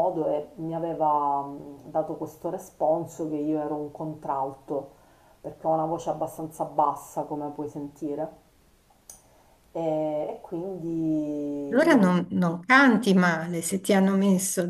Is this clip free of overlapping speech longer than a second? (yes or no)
yes